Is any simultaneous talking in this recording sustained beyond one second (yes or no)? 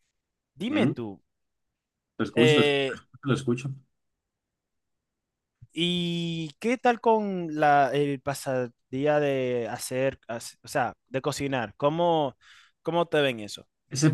no